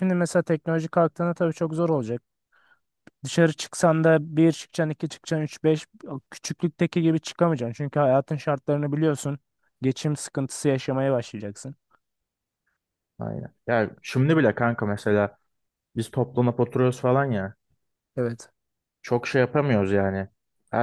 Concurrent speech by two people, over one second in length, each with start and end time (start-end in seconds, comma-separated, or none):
none